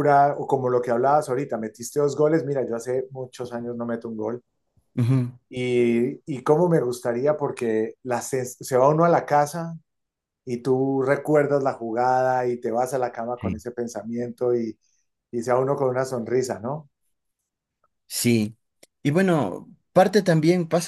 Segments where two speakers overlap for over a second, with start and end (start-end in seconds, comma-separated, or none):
none